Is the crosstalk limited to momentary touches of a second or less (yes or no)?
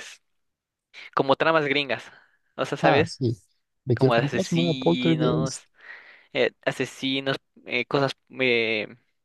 no